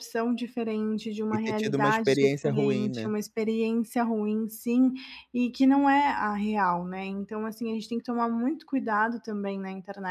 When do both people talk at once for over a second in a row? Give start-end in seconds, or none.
1.3-3.1